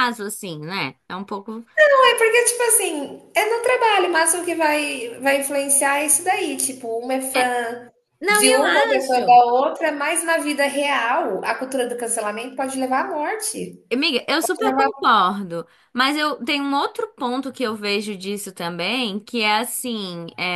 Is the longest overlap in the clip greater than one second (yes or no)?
no